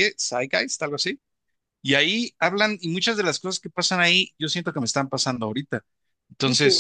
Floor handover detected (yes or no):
no